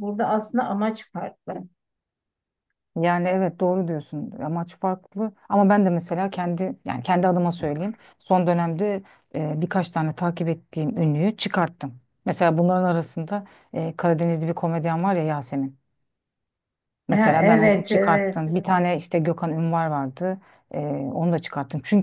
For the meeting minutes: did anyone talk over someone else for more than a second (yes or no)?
yes